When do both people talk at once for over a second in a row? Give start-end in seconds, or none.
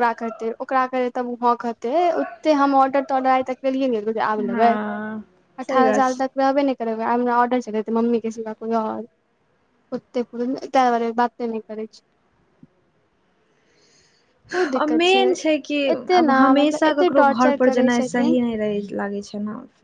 16.2-18.4